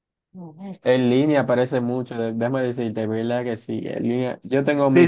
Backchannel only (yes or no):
no